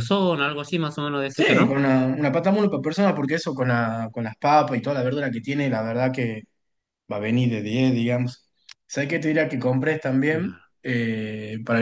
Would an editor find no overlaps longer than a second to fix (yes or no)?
yes